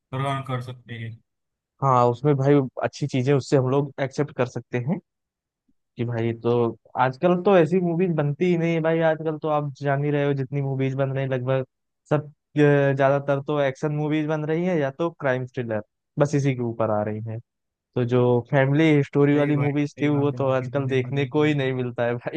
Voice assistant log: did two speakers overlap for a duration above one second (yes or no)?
yes